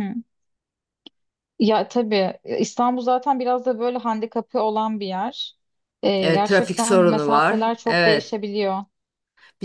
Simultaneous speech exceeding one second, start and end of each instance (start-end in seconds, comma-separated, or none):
6.2-8.3